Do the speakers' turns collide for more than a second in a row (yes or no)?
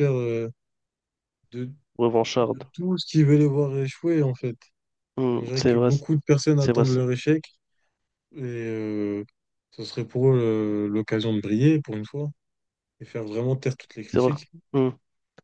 no